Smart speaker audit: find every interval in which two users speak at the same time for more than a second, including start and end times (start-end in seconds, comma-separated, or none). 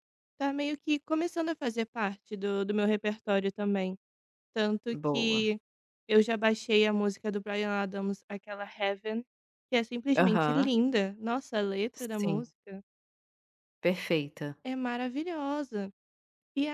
none